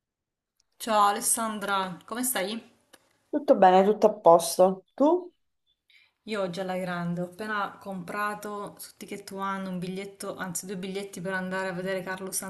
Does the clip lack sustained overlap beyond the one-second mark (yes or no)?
yes